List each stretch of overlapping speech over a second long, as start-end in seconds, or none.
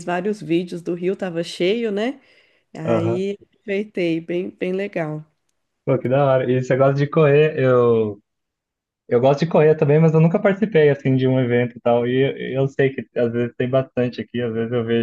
none